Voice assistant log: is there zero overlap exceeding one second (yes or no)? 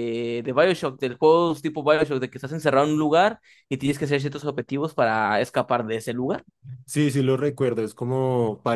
yes